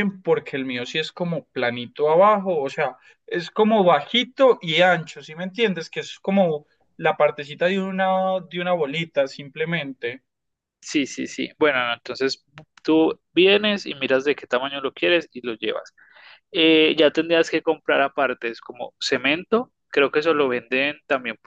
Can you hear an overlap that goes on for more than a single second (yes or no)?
no